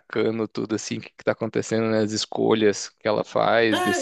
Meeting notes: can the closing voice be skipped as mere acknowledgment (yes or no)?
no